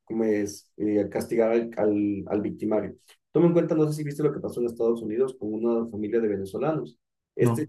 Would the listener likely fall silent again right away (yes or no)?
yes